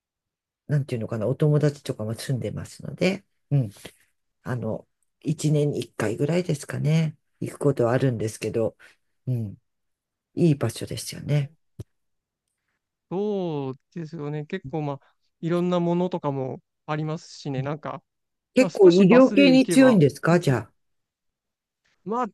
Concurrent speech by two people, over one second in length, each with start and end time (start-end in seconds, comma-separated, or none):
18.6-20.0